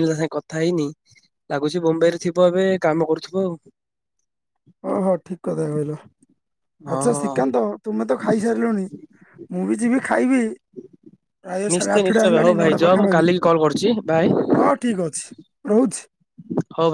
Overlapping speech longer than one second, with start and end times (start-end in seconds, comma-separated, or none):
11.7-13.3